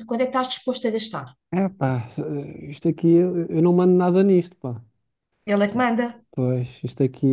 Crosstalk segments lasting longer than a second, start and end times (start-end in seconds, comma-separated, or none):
none